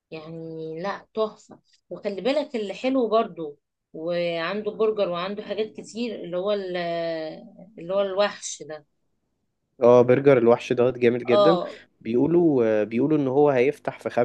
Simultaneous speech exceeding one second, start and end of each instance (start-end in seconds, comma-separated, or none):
none